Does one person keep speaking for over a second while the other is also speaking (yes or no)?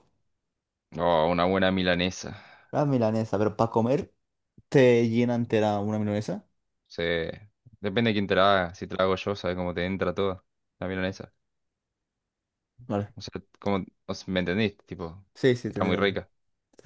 no